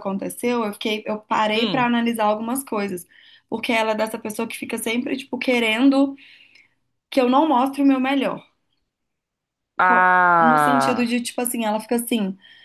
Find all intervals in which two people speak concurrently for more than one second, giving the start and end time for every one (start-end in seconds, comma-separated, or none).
9.8-11.2